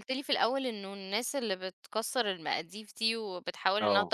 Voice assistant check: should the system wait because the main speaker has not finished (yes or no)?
yes